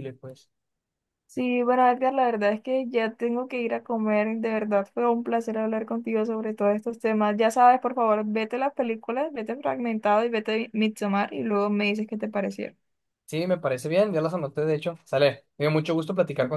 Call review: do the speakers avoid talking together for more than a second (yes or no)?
yes